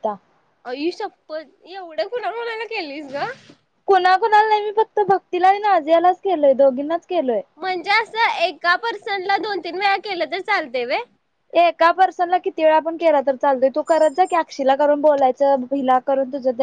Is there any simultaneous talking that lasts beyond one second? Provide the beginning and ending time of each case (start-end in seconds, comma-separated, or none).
none